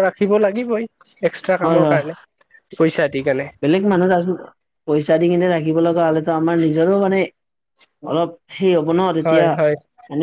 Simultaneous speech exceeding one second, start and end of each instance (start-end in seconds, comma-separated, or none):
none